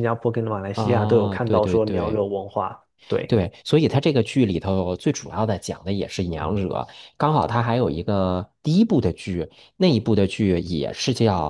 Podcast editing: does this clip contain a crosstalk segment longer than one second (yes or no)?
yes